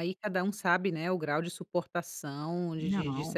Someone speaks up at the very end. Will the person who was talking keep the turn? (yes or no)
yes